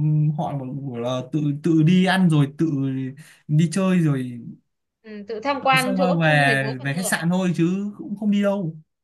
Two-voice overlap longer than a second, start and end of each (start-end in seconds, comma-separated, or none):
5.7-7.1